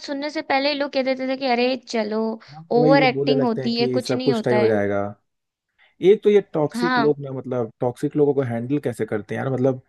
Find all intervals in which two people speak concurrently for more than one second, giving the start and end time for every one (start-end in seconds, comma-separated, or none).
2.7-4.8